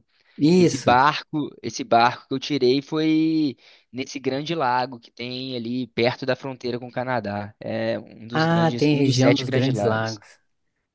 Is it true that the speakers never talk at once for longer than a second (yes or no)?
no